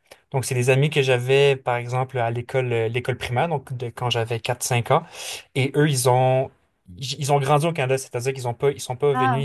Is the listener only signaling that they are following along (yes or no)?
yes